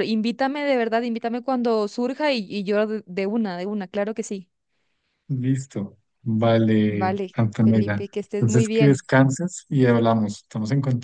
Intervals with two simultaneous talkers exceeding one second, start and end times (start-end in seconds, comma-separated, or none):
6.9-9.1